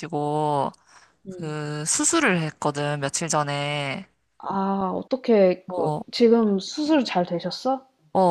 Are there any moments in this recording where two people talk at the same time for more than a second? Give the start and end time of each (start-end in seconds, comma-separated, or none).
none